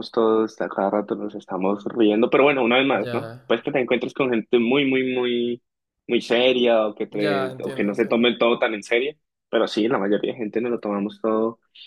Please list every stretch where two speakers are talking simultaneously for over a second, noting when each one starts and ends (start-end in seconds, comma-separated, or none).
7.1-8.3